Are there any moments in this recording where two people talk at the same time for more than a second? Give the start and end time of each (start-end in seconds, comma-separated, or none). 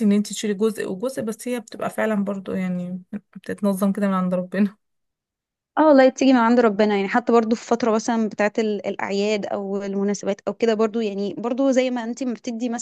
none